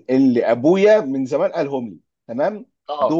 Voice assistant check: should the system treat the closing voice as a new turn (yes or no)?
no